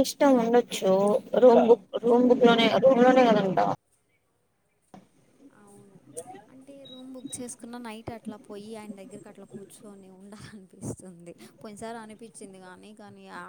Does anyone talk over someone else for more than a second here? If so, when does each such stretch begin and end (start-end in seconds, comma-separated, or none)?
none